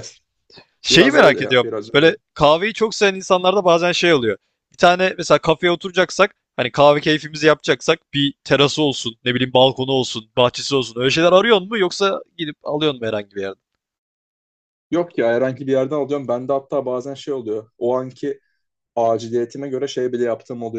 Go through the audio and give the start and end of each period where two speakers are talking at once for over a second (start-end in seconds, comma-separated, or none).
0.9-2.2